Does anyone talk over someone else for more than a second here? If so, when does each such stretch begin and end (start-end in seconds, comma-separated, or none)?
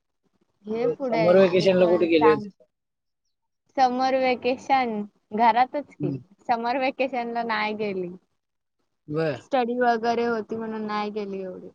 0.8-2.4